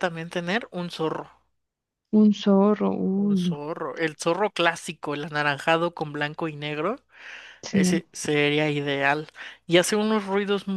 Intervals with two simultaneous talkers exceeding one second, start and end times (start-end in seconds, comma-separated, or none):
none